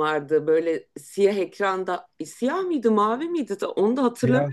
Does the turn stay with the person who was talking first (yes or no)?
yes